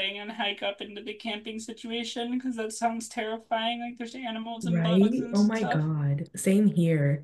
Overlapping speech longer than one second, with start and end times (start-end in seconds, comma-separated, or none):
4.6-5.9